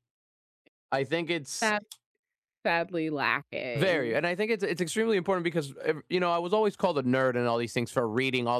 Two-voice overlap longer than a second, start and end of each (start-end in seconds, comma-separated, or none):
none